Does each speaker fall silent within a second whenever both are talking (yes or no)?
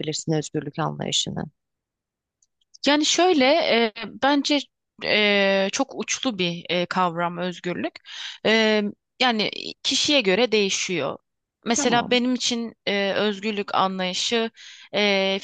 yes